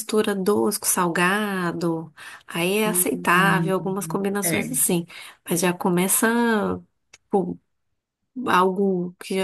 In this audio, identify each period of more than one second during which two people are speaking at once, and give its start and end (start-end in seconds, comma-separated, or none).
2.9-4.8